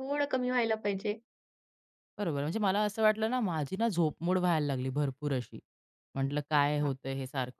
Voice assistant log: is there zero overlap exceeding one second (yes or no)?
yes